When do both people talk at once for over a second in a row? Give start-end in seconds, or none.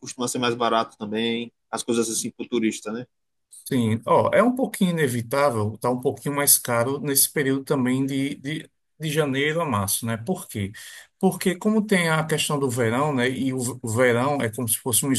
none